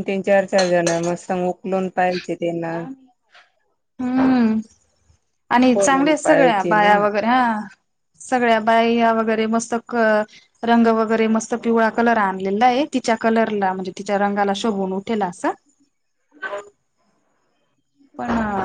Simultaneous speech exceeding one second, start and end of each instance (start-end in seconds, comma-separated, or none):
5.7-7.0